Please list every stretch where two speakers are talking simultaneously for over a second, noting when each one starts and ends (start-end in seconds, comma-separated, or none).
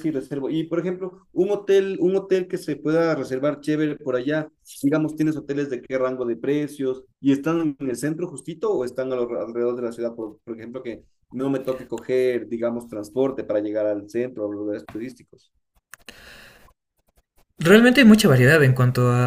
none